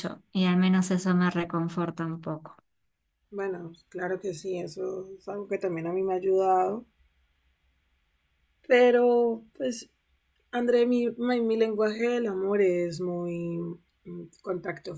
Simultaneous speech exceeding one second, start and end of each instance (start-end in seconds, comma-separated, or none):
none